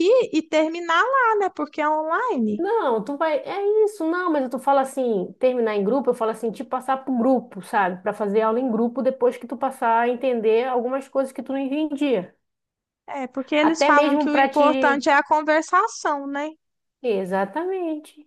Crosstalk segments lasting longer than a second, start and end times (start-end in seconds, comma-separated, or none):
13.6-15.1